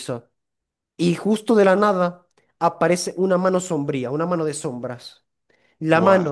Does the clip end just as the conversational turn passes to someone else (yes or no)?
no